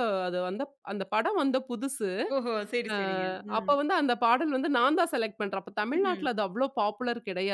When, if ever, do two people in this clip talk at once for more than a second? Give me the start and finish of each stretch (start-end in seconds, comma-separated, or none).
none